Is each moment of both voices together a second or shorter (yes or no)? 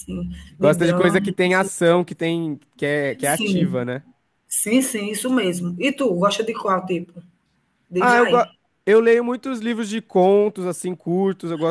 no